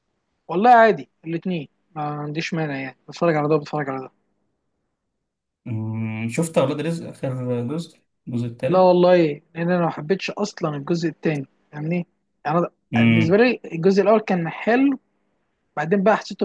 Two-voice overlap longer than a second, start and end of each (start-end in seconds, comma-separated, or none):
none